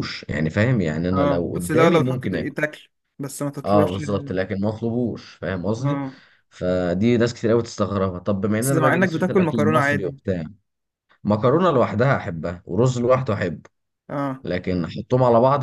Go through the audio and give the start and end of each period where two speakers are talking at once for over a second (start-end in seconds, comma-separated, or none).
1.1-2.4, 8.6-10.2